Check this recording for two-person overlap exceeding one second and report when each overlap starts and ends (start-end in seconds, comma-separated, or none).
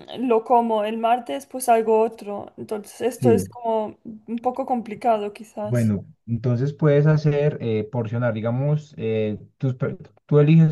none